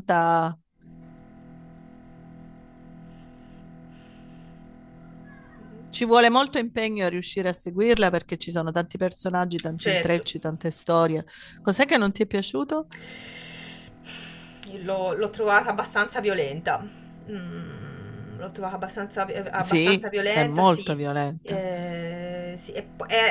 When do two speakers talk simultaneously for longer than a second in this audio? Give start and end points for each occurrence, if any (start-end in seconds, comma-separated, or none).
19.6-21.7